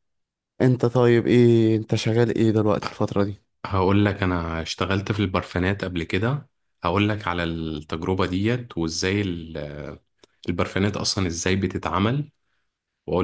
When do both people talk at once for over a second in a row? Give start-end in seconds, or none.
none